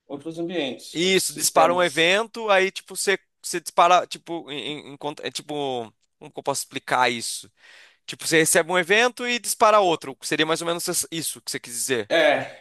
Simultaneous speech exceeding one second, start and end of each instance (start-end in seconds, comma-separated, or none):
0.9-2.1